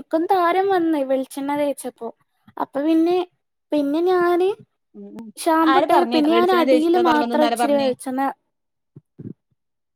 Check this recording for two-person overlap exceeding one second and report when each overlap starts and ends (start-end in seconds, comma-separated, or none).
5.7-7.9